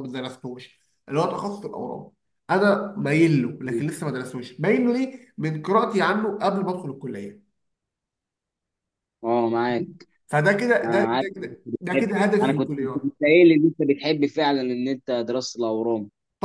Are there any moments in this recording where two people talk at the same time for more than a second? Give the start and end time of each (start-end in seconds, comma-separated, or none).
10.8-13.1